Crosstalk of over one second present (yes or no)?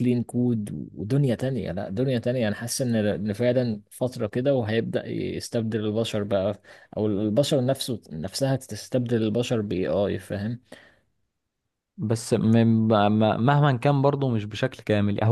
no